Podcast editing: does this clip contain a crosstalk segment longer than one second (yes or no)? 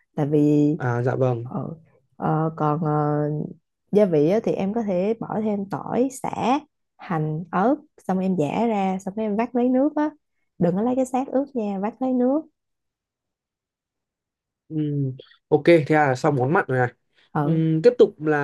no